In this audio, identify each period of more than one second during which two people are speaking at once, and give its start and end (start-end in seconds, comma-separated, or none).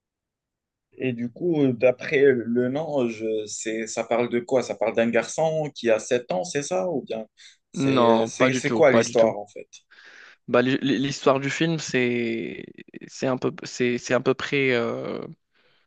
7.7-9.3